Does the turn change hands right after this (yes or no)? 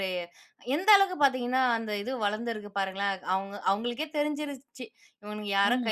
no